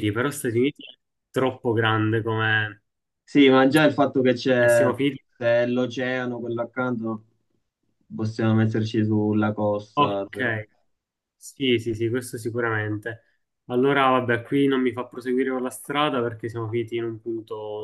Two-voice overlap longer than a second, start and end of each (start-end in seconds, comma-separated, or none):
none